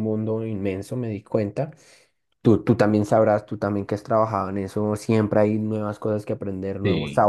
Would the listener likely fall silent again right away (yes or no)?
yes